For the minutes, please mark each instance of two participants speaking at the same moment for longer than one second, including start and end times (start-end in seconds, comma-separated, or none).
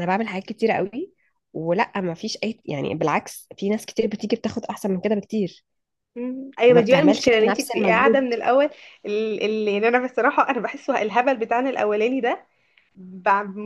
6.7-8.3